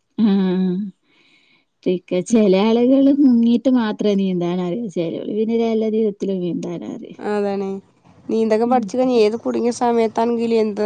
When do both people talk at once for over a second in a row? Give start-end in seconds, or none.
none